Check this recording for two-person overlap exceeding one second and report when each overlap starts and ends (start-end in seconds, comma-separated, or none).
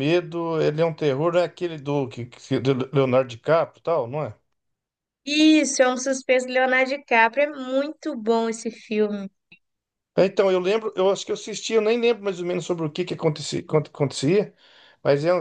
none